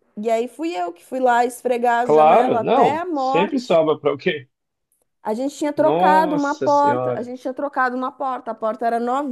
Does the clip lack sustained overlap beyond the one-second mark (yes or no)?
no